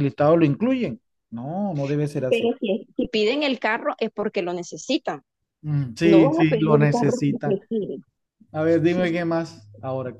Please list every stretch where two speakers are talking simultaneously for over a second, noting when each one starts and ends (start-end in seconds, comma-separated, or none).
6.0-7.6